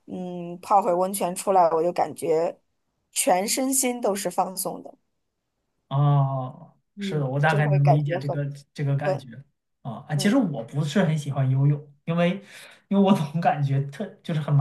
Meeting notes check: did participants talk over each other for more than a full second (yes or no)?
yes